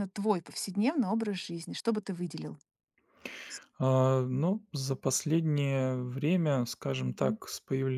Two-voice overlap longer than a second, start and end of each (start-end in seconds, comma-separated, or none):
none